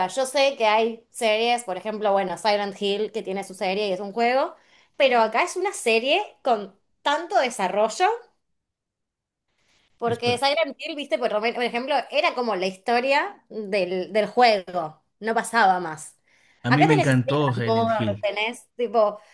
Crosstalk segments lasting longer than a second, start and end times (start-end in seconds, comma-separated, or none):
16.7-18.2